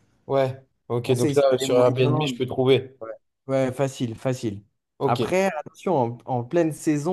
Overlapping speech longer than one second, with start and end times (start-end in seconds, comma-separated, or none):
1.0-2.4